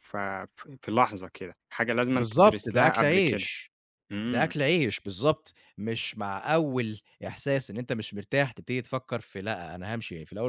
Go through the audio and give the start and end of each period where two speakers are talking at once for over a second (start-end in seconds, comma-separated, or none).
2.1-3.5